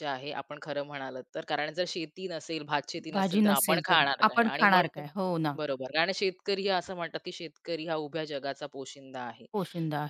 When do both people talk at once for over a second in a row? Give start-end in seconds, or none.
3.1-5.0